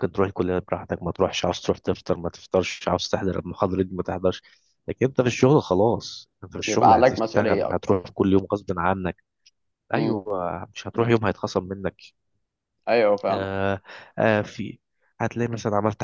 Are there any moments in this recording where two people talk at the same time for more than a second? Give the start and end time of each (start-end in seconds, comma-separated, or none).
6.6-8.1